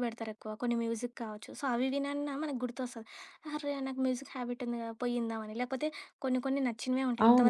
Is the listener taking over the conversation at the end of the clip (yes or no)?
yes